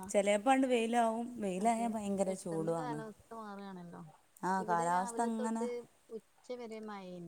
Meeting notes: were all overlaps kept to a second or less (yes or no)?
yes